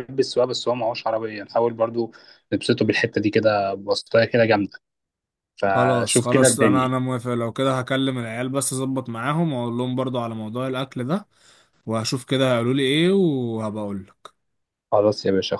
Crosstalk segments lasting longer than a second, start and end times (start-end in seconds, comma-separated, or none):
5.7-7.0